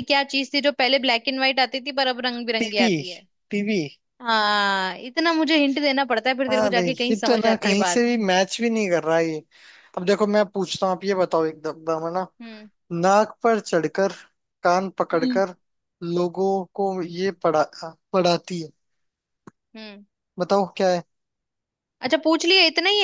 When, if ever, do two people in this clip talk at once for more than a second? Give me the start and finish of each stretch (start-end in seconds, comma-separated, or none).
6.5-8.0